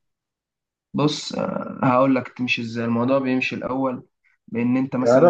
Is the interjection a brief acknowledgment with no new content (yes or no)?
no